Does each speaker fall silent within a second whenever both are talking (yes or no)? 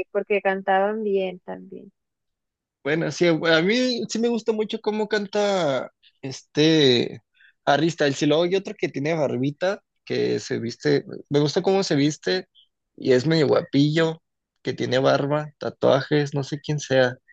yes